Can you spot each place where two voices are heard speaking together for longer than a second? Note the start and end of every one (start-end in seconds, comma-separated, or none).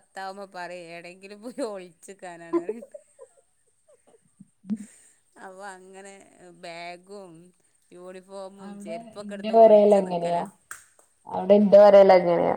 8.7-10.4